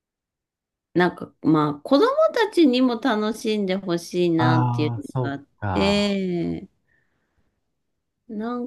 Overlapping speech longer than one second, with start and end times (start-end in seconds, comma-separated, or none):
4.4-6.1